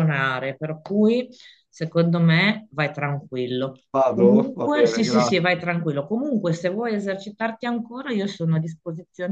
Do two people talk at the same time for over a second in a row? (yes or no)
yes